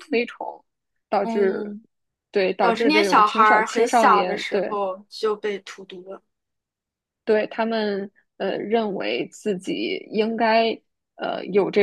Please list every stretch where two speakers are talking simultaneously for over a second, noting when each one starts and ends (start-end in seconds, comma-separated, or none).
2.6-4.8